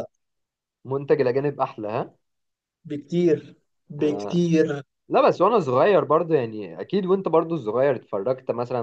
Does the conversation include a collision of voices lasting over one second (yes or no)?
no